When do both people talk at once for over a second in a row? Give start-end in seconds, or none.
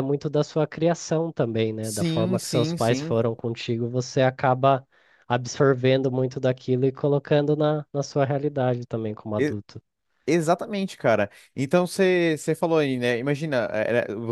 1.8-3.2